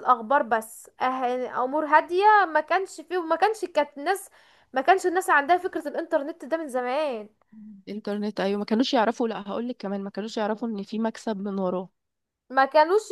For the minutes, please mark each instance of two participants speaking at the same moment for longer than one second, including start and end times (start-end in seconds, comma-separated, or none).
none